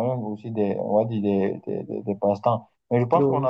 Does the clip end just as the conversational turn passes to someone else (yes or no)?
no